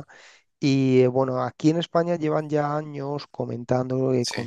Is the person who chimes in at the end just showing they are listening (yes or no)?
yes